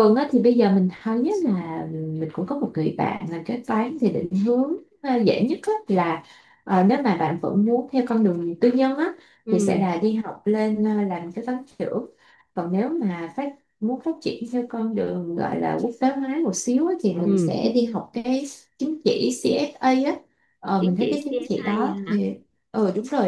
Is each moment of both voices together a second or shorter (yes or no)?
no